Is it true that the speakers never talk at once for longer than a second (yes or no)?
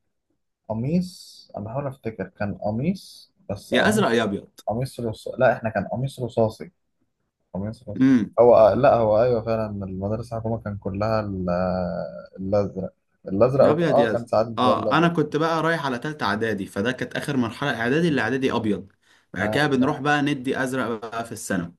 no